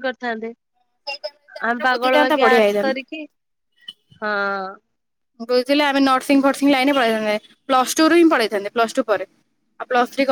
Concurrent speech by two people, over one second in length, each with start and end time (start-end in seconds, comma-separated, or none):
1.7-3.1